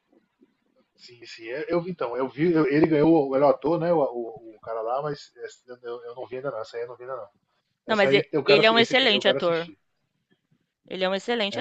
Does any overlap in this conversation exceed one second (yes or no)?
yes